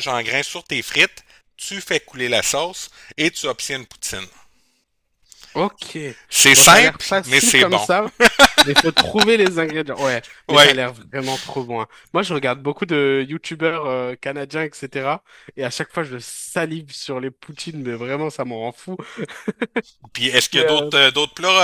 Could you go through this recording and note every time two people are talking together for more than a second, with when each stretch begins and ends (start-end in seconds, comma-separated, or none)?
6.5-7.9